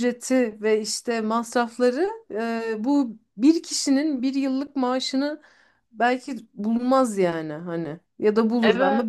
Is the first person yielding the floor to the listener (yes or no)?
no